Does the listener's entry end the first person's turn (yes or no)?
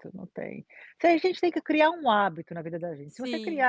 no